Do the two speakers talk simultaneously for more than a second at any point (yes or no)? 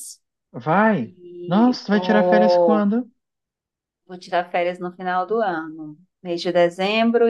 yes